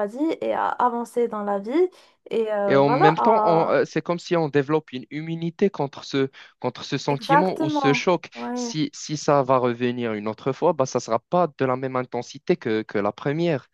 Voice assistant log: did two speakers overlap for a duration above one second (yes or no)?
yes